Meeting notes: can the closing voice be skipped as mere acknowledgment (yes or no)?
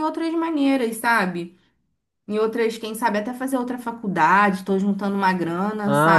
no